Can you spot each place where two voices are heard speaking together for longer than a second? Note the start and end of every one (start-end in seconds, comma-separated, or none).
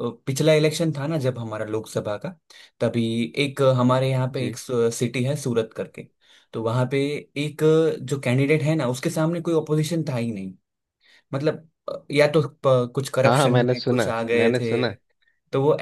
13.2-14.9